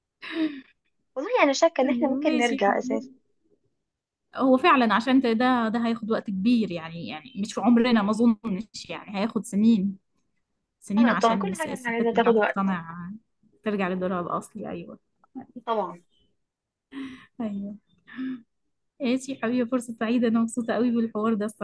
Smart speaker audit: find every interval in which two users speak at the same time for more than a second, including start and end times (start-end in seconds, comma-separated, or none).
1.8-3.1, 11.0-12.7